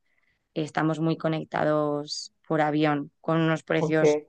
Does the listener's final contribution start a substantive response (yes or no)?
no